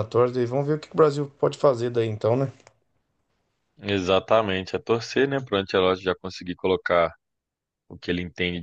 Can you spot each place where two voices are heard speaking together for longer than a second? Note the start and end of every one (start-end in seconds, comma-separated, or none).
none